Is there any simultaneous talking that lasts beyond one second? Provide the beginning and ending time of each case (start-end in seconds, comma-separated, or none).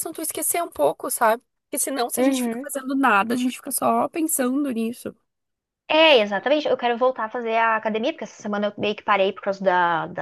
none